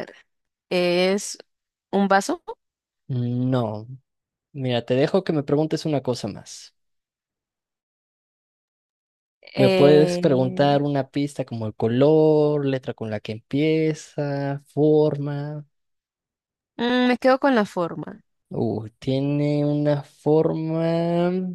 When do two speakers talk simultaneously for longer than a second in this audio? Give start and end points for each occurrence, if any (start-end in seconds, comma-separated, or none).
9.6-10.8